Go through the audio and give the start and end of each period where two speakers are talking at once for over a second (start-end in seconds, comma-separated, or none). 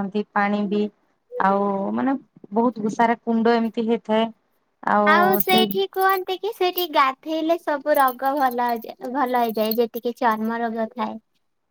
none